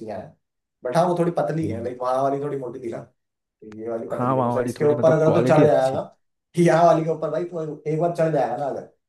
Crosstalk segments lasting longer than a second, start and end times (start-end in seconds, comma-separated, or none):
4.1-6.0